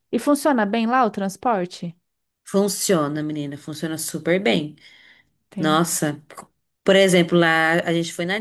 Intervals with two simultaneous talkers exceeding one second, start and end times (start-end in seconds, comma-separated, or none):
none